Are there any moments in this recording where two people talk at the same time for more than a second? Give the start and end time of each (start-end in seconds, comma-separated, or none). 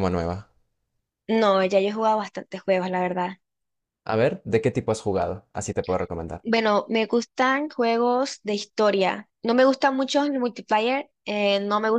none